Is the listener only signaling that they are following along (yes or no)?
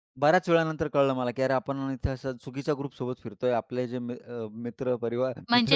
no